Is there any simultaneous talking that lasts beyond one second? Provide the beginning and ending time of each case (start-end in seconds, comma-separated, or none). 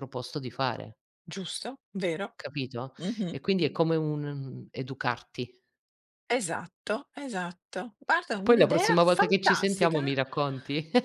8.4-10.0